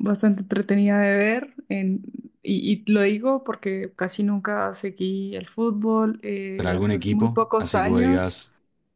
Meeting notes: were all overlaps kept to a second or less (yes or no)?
no